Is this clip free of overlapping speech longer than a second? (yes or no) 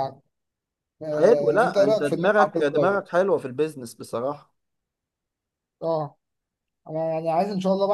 no